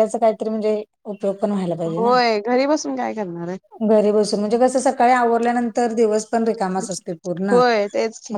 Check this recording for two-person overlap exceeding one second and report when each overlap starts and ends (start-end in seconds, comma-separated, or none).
none